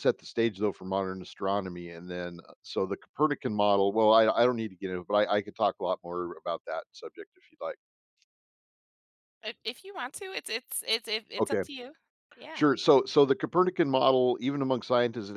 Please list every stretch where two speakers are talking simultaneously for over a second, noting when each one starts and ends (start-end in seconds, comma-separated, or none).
none